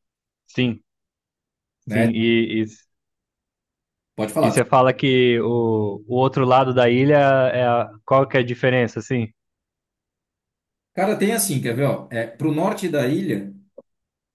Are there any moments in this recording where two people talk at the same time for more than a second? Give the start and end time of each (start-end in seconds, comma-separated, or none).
none